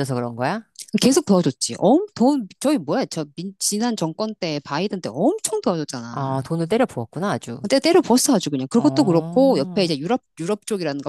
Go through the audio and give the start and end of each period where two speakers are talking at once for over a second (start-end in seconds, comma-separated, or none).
8.7-9.9